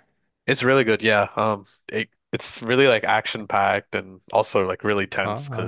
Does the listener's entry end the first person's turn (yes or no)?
no